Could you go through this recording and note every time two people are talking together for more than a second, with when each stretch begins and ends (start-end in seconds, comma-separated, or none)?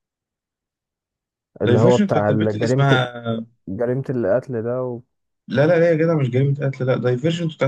1.6-3.0